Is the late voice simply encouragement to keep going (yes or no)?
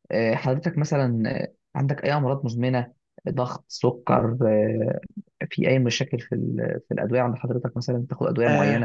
no